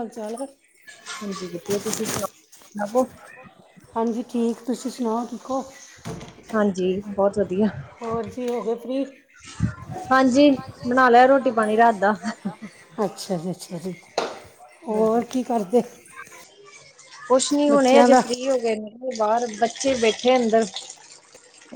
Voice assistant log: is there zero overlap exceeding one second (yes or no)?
yes